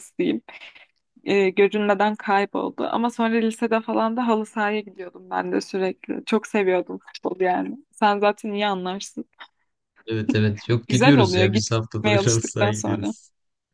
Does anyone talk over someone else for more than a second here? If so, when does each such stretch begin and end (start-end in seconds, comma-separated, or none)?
10.9-13.1